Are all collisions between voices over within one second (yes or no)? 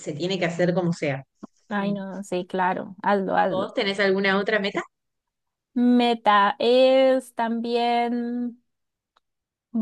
yes